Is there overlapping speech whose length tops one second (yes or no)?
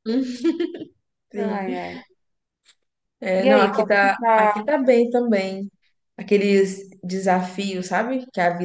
yes